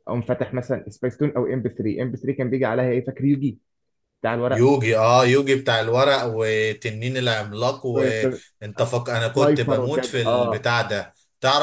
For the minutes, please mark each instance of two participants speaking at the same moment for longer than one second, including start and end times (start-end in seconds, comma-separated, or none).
9.3-10.7